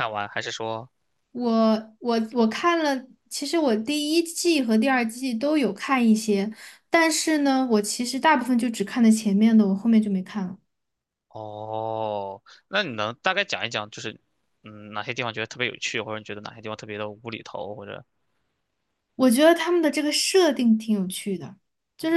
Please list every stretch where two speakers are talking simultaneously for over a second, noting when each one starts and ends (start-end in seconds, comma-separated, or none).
none